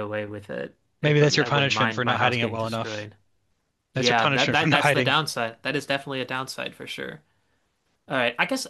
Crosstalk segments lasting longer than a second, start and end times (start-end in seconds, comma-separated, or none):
1.0-3.0, 3.9-5.2